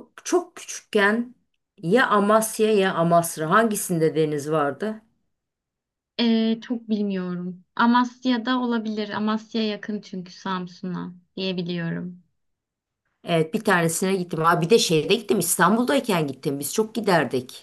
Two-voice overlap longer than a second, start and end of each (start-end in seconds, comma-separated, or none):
none